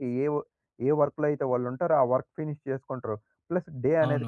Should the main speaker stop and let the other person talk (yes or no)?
yes